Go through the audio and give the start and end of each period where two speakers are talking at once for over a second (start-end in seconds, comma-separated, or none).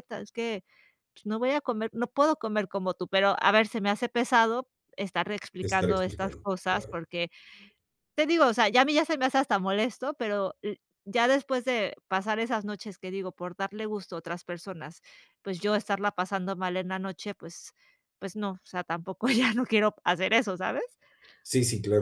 5.6-7.0